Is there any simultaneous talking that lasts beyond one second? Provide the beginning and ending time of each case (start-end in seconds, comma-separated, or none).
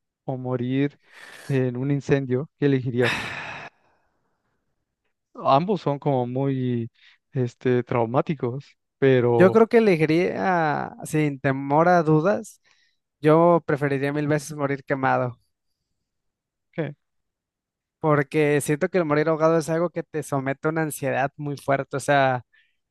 none